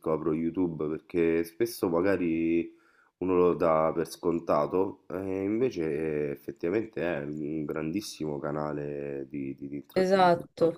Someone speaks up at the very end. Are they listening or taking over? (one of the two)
taking over